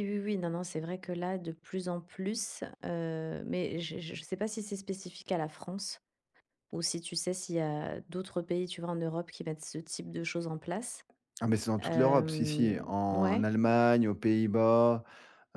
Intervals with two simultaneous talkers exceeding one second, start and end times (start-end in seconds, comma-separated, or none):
11.8-13.5